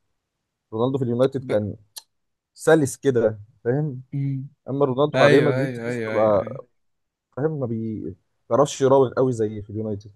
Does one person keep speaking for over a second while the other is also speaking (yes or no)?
yes